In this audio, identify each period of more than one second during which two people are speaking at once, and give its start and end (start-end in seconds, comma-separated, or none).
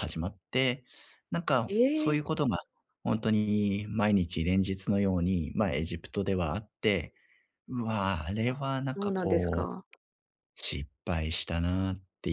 8.4-9.7